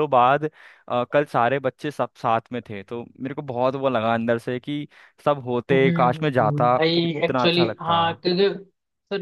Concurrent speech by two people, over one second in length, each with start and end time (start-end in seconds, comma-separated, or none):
5.7-8.0